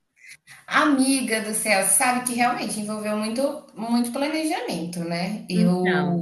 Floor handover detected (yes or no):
no